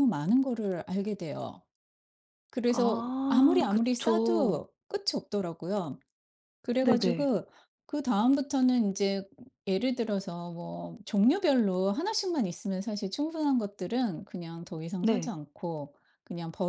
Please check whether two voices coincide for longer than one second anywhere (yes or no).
yes